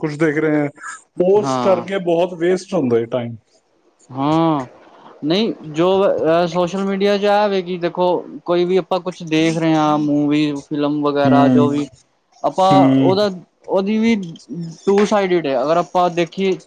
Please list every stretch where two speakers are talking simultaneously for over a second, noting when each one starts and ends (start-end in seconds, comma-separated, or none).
none